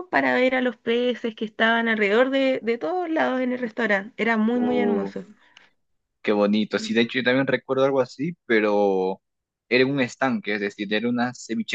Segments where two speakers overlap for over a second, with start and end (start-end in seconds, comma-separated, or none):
none